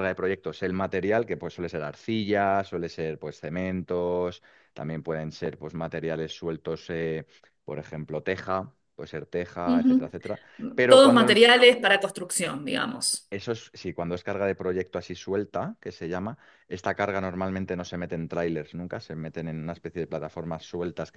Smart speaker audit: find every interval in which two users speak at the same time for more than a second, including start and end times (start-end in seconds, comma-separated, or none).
none